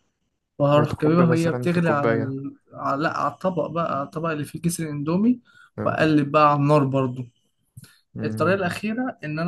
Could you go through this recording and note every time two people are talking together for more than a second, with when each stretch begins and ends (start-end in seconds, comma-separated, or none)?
0.8-2.4